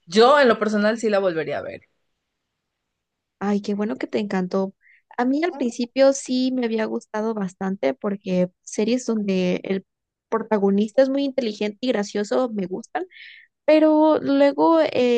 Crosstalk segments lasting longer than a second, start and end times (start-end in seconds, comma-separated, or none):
none